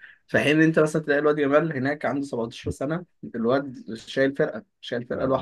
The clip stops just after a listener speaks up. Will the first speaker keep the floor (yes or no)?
no